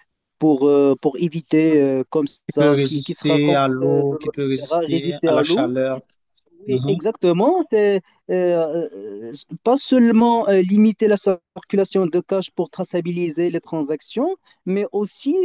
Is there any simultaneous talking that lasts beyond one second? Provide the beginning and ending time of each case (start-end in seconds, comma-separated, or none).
2.5-5.7